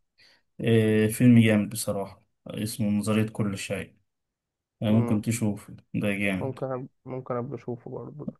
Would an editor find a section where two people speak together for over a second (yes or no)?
no